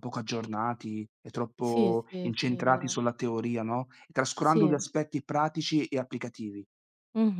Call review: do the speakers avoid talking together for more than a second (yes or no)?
no